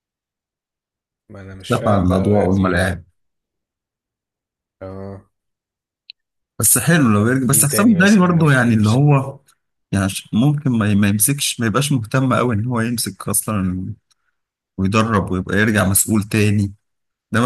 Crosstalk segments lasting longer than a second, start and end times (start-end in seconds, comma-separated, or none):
1.7-2.9, 7.5-9.0